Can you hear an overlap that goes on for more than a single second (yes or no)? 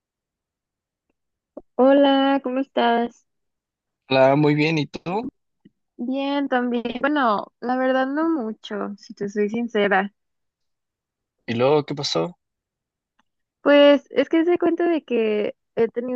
no